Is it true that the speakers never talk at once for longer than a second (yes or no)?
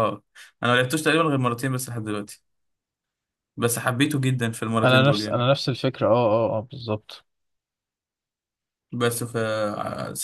yes